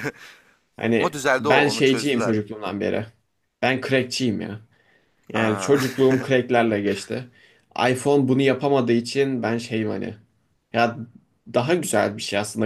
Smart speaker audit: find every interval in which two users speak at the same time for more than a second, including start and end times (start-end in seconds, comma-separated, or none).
1.0-2.4